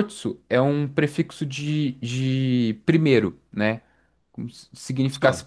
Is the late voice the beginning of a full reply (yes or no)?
no